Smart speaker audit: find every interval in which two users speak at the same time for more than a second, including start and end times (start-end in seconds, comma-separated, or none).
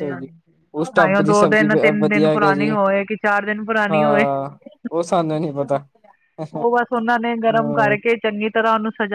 1.0-2.7